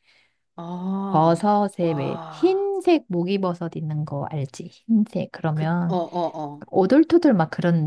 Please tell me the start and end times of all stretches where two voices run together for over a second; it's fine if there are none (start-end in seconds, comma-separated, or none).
1.1-2.6